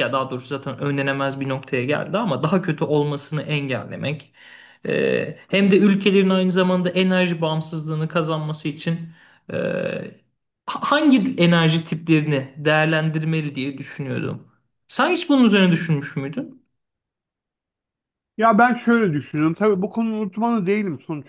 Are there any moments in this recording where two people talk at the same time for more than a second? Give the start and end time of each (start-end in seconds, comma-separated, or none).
none